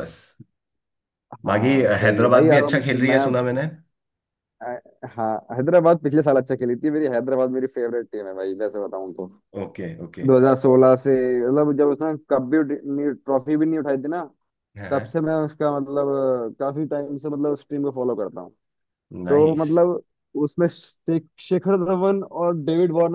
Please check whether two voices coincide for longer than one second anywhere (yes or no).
yes